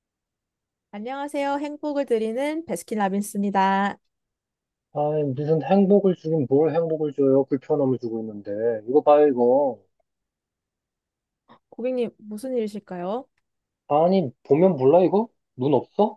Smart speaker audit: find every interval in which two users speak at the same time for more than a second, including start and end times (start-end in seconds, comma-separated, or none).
none